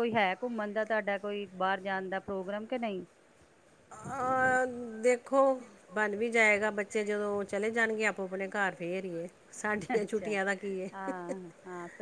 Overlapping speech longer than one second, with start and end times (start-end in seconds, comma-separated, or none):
none